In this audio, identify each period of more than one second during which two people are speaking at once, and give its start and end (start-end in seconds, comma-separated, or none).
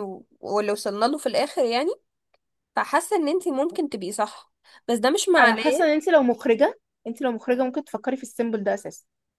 none